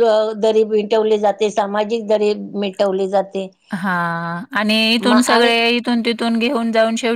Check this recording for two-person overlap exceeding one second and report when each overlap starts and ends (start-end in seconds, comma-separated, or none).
none